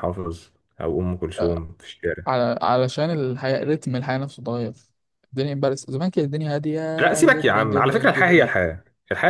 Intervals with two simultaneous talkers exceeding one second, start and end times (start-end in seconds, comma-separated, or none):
7.2-8.5